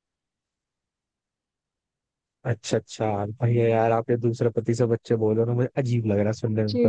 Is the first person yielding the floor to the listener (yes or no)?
yes